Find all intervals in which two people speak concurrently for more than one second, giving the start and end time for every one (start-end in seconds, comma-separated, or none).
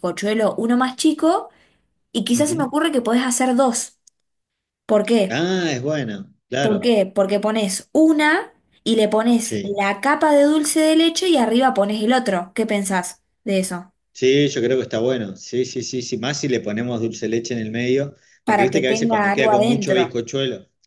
18.5-20.0